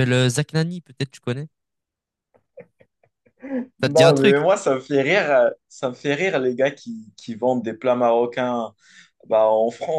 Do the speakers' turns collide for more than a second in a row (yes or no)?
no